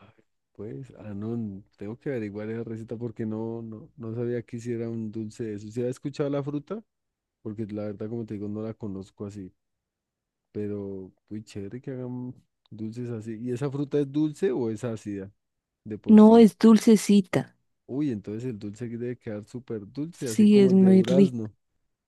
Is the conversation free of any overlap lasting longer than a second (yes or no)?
no